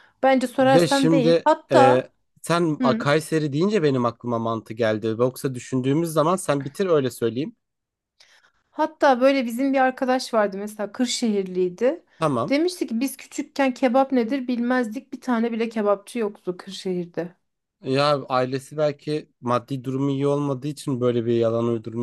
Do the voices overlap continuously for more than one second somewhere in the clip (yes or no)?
yes